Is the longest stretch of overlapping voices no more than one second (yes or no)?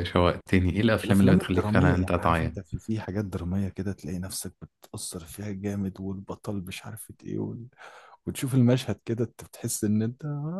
no